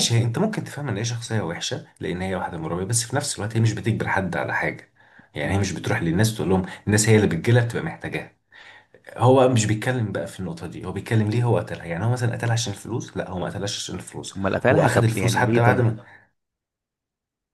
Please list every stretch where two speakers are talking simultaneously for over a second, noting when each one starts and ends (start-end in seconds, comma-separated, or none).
14.4-15.9